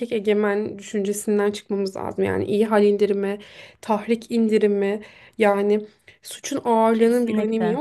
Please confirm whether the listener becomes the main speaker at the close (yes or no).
no